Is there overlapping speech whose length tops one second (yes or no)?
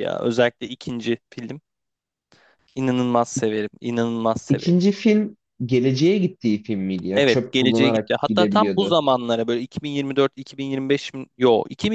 yes